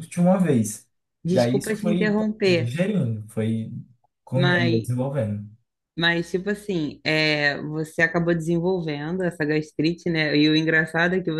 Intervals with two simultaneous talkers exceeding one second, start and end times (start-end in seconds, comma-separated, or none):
1.3-2.7